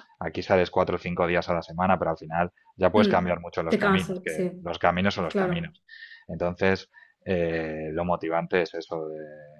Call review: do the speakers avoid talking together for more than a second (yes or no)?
no